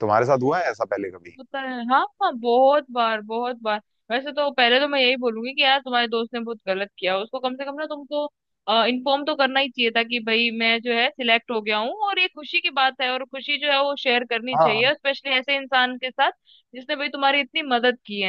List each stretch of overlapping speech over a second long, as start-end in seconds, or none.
none